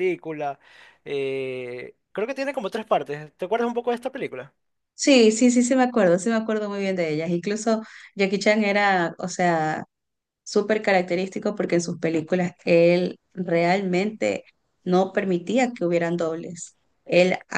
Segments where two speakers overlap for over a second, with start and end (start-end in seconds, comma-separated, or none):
none